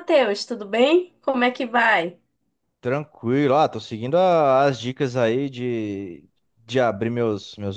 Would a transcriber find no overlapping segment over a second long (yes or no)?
yes